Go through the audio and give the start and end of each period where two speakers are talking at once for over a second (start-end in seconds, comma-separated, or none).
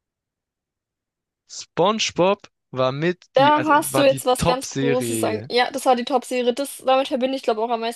3.3-5.5